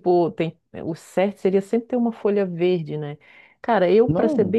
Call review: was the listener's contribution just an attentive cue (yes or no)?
yes